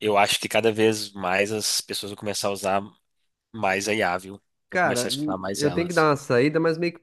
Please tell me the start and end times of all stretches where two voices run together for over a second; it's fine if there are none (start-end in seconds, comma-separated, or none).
4.7-6.1